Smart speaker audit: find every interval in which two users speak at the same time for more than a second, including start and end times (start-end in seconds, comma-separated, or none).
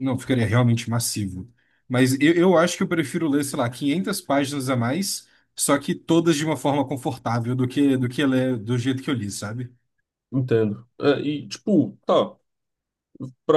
none